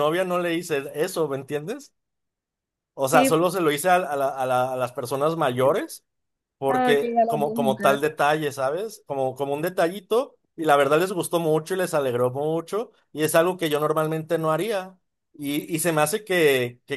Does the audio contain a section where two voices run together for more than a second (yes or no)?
yes